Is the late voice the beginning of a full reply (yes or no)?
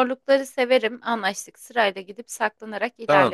yes